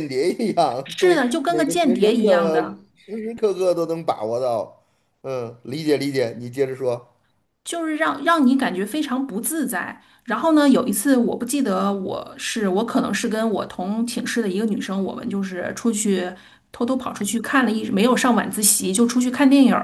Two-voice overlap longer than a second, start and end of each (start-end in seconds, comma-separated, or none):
0.8-2.6